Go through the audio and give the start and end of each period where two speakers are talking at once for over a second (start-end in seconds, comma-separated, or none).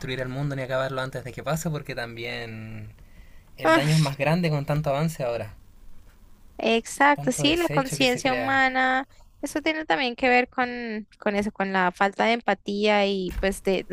7.1-8.6